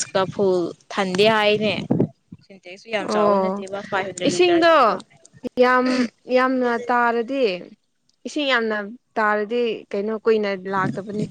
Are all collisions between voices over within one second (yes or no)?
yes